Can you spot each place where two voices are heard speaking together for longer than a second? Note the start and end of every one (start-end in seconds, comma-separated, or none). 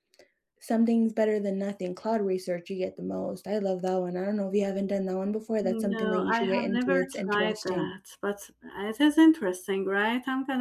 5.6-8.0